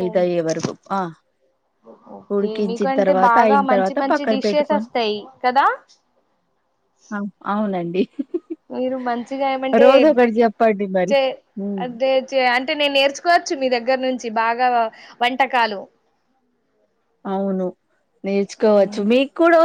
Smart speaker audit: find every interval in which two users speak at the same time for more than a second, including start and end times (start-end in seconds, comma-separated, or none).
2.4-4.9